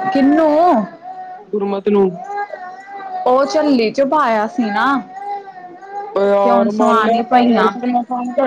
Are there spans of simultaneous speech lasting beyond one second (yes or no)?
yes